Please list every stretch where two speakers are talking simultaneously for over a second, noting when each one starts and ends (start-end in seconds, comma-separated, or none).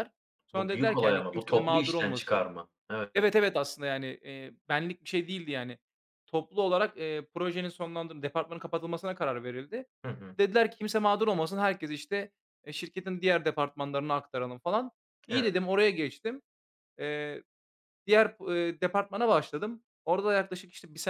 0.5-2.5